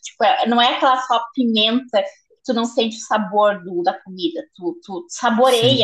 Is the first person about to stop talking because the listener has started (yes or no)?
yes